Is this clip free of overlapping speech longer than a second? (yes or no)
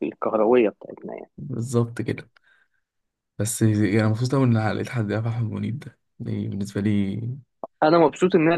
yes